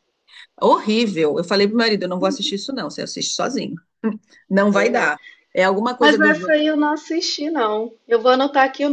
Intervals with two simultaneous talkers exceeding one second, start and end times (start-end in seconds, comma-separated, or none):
none